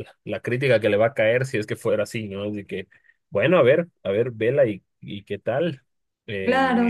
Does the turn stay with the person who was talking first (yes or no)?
no